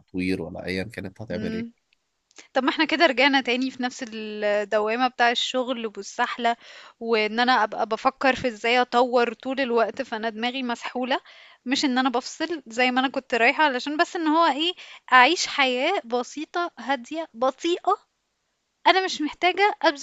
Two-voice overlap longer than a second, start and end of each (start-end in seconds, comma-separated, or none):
none